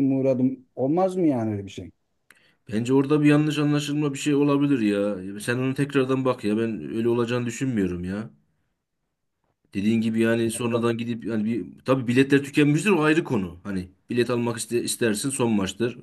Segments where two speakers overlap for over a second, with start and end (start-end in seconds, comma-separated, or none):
none